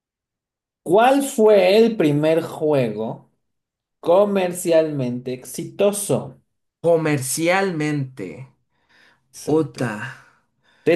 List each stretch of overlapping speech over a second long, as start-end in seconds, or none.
none